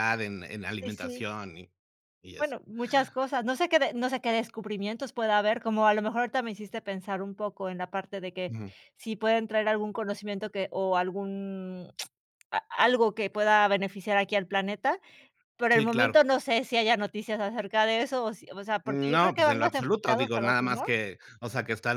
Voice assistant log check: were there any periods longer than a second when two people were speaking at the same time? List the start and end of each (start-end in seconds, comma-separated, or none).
18.9-20.8